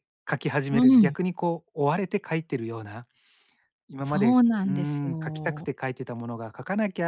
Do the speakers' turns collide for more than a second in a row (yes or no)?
yes